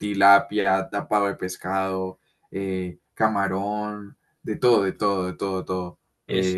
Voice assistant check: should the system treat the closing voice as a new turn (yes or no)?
no